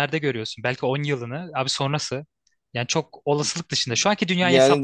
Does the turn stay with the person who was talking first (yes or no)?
no